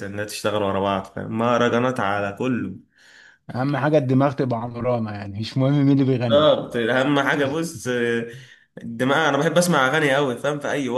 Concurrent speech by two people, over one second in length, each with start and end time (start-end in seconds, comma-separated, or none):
none